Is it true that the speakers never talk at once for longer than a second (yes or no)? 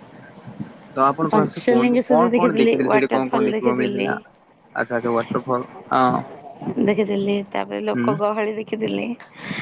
no